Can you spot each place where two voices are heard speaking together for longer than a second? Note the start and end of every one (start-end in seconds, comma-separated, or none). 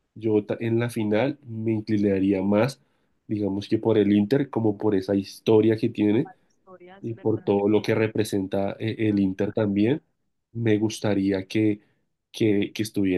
none